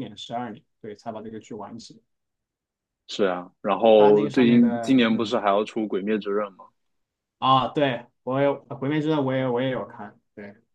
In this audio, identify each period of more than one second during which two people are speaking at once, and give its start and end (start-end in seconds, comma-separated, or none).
4.0-5.3